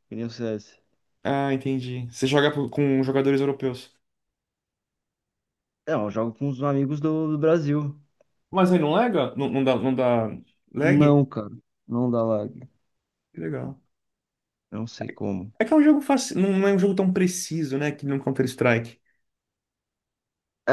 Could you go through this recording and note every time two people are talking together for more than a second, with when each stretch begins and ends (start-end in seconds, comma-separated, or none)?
none